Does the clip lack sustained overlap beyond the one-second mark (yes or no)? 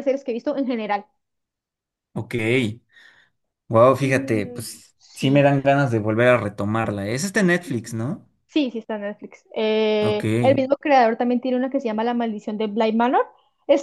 no